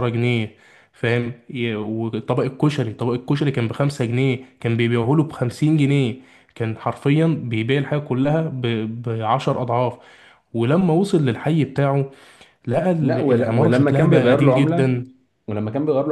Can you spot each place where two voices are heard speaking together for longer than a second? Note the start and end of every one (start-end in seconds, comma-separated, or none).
13.0-15.0